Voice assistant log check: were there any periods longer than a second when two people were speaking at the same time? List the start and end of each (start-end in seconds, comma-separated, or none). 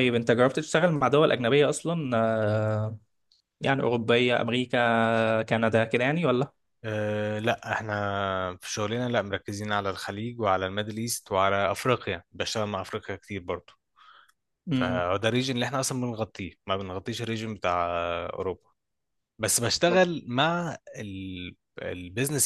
none